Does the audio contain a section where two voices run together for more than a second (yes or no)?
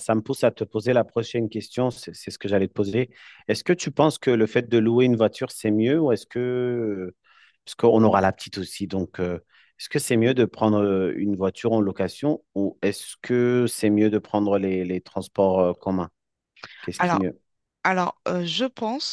no